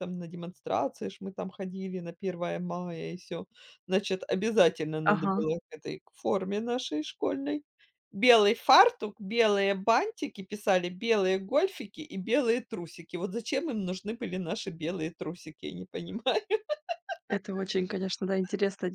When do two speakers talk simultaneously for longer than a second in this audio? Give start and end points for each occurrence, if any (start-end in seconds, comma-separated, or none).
none